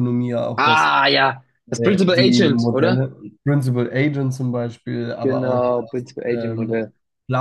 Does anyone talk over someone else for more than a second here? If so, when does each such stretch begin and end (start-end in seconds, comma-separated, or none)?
1.8-3.0, 5.2-6.9